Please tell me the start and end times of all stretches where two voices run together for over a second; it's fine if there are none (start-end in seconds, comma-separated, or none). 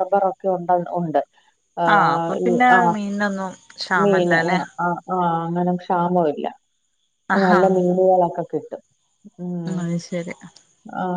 none